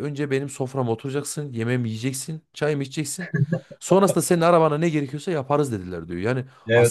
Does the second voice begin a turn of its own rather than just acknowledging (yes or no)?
yes